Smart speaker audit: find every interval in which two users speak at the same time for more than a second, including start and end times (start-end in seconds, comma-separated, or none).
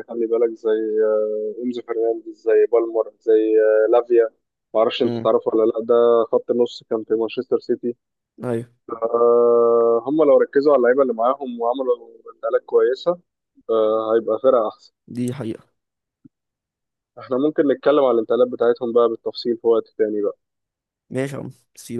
none